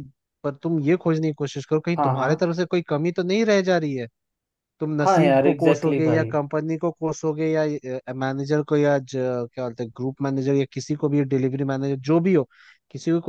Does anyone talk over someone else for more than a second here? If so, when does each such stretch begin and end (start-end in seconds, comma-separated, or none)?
5.0-6.3